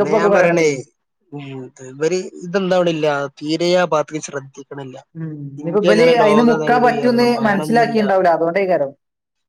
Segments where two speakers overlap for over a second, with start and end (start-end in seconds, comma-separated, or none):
5.6-8.0